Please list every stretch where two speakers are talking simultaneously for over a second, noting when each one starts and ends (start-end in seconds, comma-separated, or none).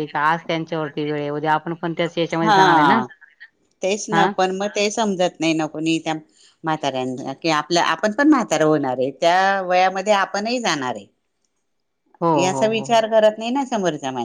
none